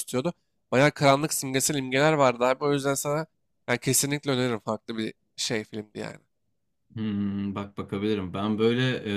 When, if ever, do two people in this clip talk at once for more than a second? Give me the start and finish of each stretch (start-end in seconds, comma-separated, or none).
none